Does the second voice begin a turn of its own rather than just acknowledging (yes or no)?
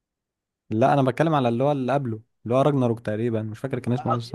yes